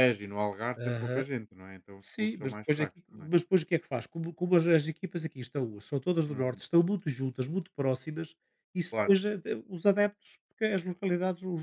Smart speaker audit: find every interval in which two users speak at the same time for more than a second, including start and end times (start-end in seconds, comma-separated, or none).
2.0-3.3